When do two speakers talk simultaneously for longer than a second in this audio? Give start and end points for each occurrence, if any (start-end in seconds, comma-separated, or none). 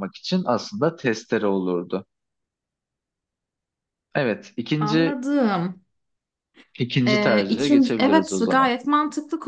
7.1-8.7